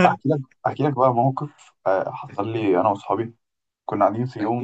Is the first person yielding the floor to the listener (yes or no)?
no